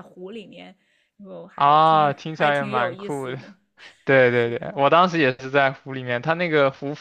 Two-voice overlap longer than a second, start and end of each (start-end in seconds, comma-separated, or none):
1.6-3.4